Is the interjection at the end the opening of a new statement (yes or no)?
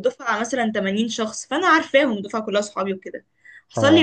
no